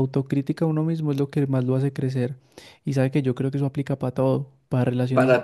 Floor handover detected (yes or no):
no